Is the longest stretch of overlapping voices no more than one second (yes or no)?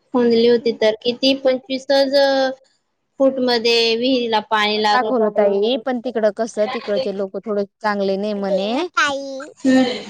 yes